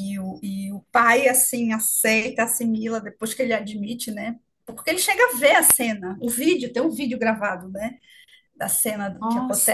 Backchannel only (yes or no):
yes